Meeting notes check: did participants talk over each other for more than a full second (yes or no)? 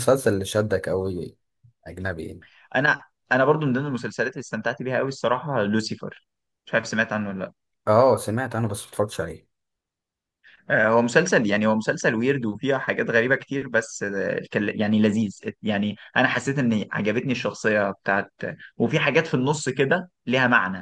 no